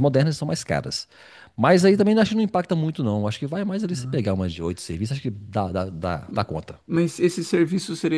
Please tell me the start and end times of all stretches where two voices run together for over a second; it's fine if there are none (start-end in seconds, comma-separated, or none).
none